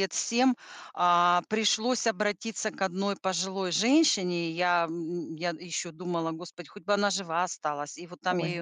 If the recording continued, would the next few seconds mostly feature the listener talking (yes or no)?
no